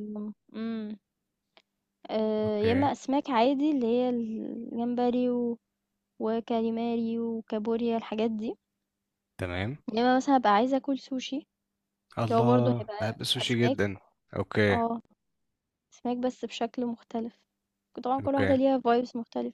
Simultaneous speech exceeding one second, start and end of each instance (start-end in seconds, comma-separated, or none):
12.2-13.8